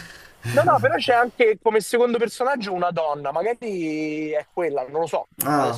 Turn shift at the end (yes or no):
yes